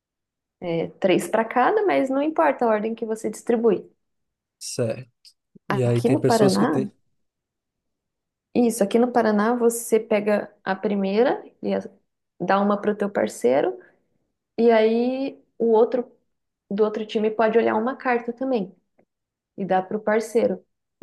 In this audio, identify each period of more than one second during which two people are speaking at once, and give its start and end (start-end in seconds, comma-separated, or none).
5.7-6.9